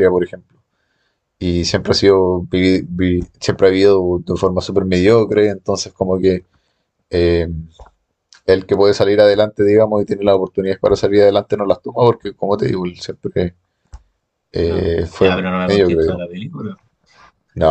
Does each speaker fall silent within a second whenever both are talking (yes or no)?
no